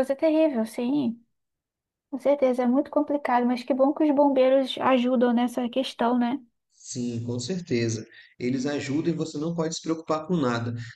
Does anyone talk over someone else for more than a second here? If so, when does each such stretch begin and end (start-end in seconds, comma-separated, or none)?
none